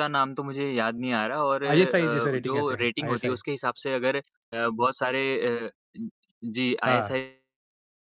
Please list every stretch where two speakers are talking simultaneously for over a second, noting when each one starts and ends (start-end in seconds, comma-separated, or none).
1.7-3.4